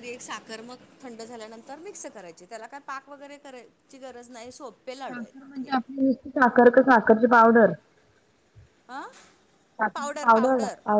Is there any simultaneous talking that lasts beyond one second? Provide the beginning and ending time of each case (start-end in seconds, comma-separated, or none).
none